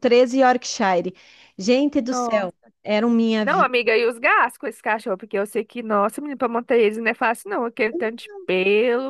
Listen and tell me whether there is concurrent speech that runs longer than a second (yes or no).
no